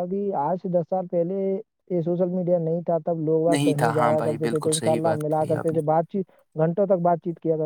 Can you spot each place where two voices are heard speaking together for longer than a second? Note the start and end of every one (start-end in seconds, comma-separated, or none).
3.5-5.8